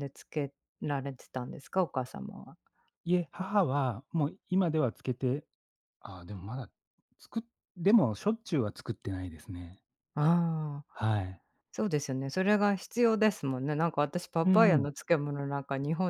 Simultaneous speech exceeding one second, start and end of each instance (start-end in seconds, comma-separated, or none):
none